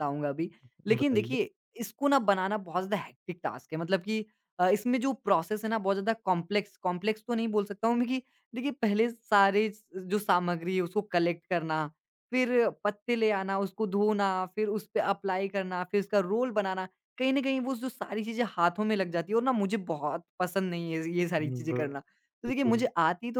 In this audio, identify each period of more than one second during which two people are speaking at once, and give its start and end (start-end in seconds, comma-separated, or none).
21.4-22.8